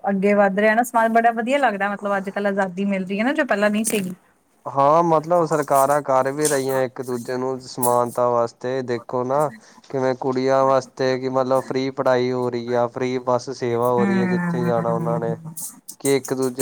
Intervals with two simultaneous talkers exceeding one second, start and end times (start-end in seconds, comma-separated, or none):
14.0-15.3